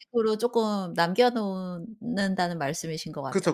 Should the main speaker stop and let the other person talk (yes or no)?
yes